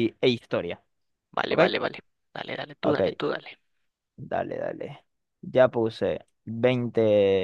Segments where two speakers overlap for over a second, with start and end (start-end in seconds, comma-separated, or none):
none